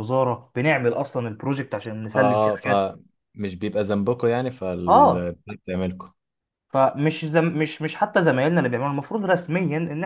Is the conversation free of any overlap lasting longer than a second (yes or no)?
yes